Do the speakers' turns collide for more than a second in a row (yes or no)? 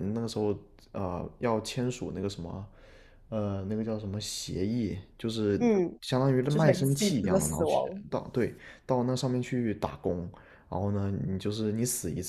yes